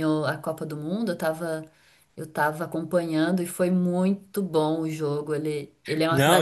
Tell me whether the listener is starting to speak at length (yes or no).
yes